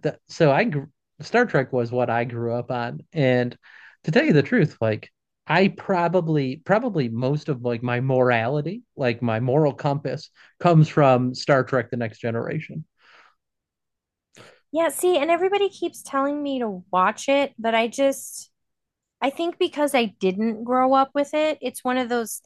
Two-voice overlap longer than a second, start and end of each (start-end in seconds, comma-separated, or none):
none